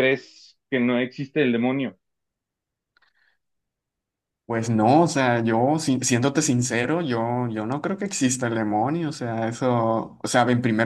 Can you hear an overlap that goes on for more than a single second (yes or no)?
no